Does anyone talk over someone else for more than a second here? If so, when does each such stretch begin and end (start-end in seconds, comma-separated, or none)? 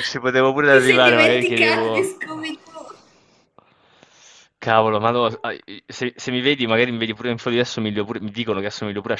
0.7-2.1